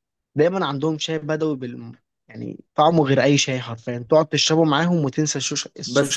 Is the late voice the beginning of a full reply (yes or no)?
yes